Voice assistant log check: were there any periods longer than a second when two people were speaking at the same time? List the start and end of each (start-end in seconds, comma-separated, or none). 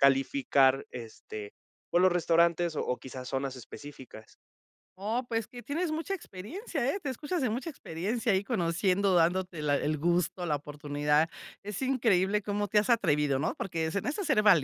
none